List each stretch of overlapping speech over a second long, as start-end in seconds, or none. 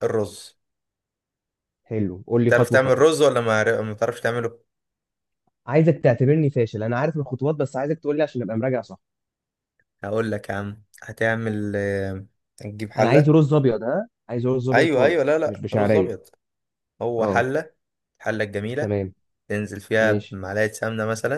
14.7-16.2